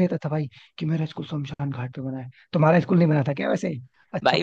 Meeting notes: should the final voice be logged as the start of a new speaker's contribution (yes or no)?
yes